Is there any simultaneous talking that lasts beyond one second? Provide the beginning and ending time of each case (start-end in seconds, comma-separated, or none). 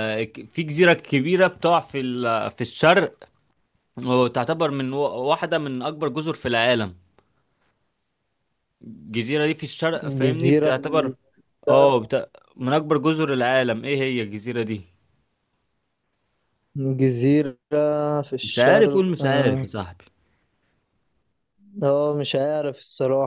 18.4-19.7